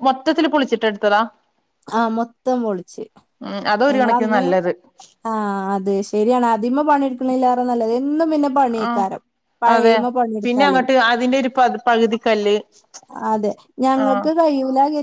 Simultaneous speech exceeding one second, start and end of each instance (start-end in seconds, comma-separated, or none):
none